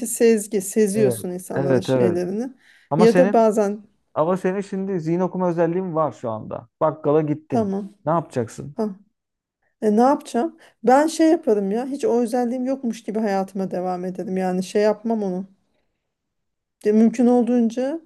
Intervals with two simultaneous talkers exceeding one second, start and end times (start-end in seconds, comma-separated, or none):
0.9-2.2